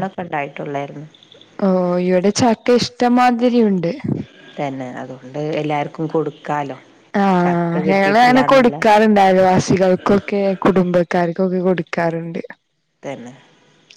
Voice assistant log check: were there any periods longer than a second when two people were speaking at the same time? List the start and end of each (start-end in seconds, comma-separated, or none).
7.4-8.8